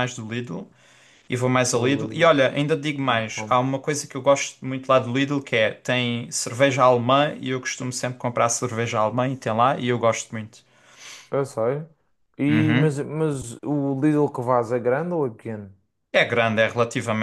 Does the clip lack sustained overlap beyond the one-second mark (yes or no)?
yes